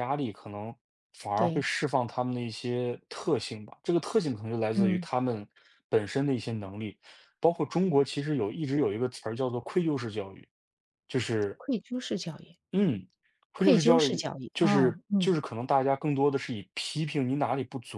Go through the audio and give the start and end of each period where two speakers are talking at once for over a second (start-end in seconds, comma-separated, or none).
13.6-15.3